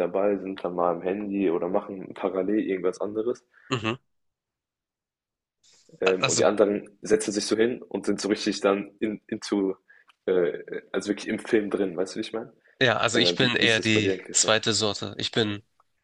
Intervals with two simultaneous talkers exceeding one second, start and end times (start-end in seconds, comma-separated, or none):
13.1-14.5